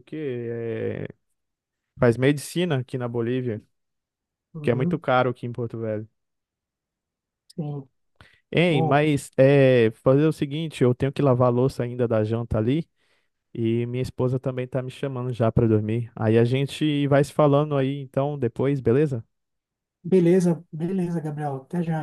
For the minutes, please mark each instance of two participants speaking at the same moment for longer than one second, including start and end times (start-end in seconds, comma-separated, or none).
none